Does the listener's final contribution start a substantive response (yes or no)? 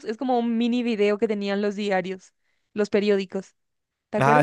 yes